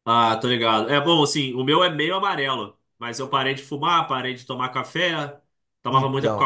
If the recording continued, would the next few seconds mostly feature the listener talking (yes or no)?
no